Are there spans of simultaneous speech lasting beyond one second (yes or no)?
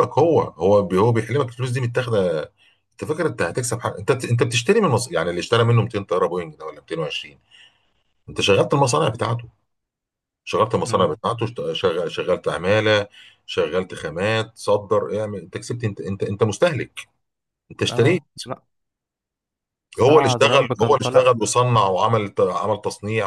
yes